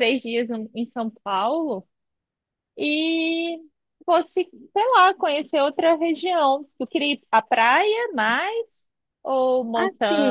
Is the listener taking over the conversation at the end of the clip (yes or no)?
yes